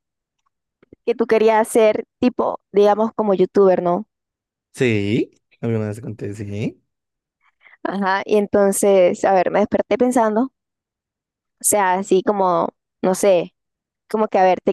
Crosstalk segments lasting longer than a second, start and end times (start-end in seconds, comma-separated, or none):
none